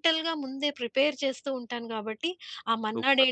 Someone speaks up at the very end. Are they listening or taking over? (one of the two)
listening